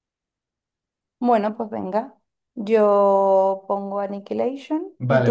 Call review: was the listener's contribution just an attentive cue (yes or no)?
no